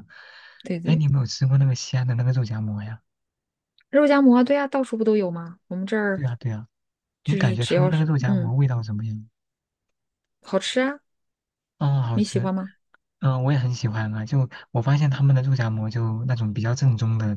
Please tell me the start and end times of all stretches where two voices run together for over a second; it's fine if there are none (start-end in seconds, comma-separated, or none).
7.2-8.5